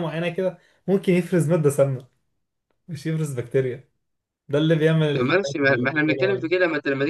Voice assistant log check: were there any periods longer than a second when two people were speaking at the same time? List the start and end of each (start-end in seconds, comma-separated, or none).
5.1-6.5